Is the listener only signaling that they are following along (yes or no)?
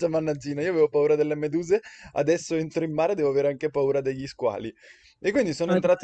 yes